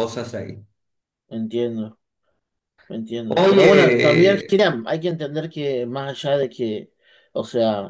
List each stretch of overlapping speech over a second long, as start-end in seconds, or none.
3.3-4.6